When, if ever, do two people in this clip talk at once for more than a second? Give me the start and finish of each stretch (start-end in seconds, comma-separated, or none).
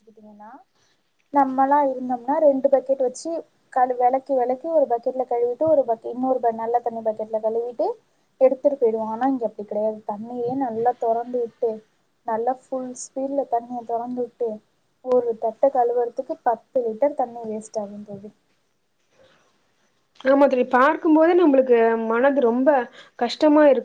none